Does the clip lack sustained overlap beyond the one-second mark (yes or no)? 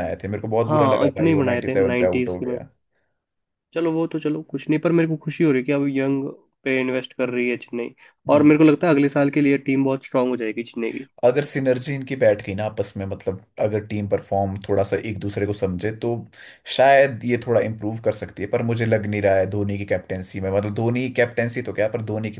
no